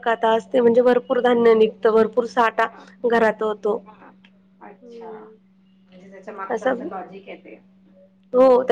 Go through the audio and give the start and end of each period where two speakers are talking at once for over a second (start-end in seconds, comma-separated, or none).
none